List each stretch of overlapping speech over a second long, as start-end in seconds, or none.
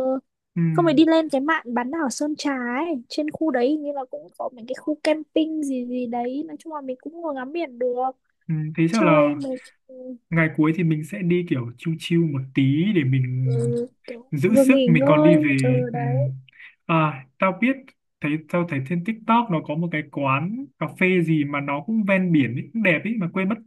14.3-16.3